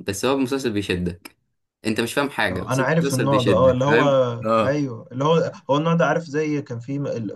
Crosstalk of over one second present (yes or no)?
yes